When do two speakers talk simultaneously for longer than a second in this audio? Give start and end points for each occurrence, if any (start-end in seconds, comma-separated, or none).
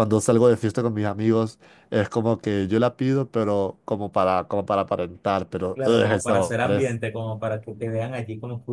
5.7-7.0